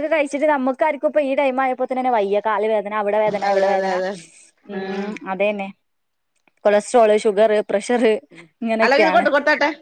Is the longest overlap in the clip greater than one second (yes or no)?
no